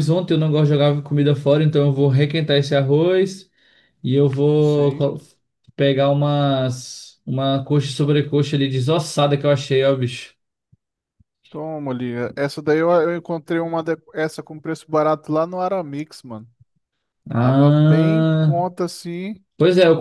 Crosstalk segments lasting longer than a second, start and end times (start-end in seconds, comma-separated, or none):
17.4-18.6